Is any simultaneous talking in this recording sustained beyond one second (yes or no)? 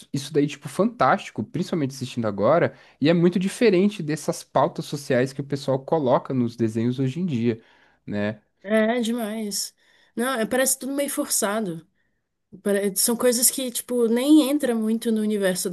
no